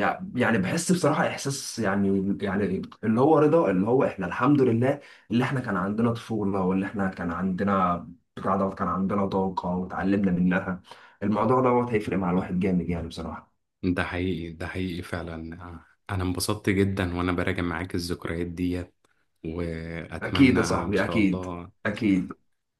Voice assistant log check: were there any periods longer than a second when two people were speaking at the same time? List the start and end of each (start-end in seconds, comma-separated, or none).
20.2-21.4